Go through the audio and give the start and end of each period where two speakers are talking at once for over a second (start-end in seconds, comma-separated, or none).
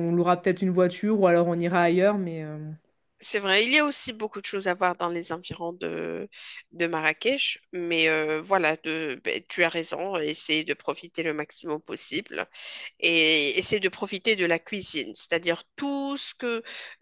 none